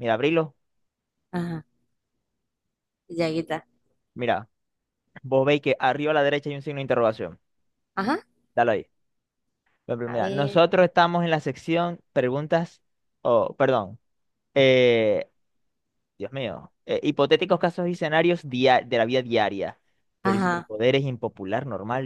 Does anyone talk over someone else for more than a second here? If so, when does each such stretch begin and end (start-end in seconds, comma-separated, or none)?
none